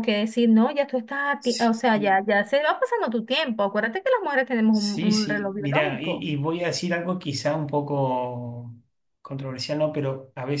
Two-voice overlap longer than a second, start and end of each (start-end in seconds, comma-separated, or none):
4.7-6.3